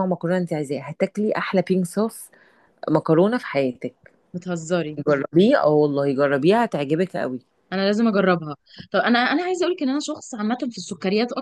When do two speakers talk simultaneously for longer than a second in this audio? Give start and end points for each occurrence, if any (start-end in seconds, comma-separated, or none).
none